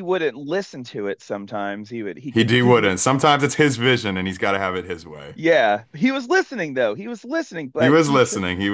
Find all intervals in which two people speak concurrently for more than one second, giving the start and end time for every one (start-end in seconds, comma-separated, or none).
none